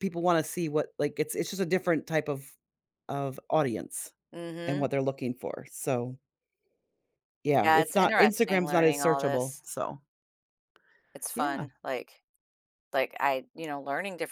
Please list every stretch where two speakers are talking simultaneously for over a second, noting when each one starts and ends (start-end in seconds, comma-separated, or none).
7.6-9.6